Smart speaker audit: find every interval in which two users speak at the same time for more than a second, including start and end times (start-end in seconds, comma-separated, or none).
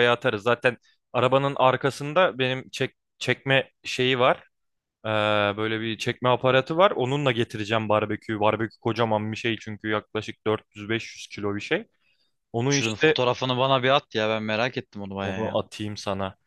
none